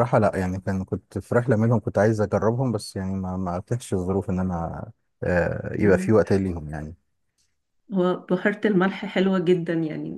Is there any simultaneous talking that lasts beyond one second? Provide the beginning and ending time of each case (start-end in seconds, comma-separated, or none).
none